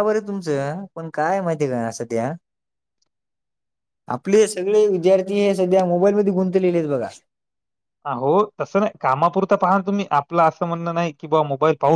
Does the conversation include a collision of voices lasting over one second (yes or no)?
no